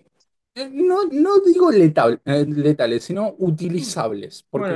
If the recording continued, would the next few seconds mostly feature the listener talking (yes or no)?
no